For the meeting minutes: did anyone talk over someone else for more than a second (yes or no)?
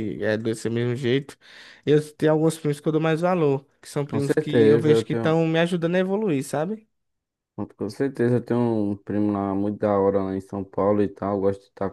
yes